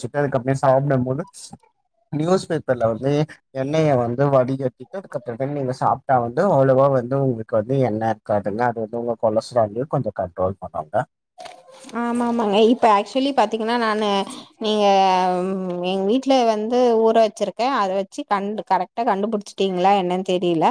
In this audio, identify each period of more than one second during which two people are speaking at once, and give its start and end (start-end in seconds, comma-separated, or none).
none